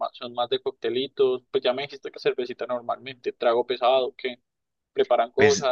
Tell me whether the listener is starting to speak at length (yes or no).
yes